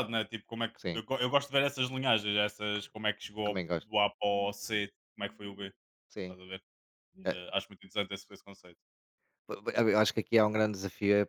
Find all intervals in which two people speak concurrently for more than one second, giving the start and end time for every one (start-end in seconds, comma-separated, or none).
none